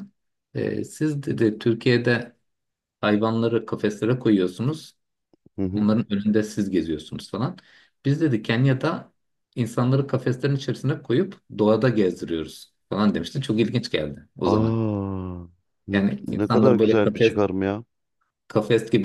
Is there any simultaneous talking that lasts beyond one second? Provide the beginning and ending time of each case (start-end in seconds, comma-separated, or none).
15.9-17.4